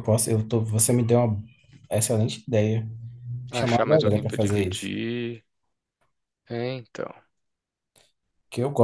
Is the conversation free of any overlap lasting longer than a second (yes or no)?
no